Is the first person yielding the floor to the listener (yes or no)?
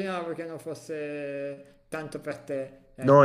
yes